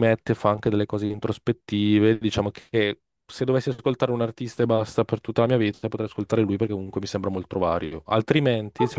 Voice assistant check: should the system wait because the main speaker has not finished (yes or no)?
no